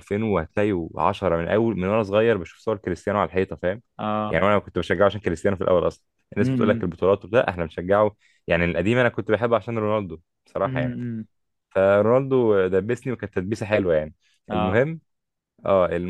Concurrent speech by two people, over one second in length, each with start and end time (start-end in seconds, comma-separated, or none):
none